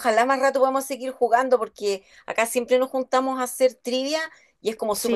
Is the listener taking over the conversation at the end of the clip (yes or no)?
no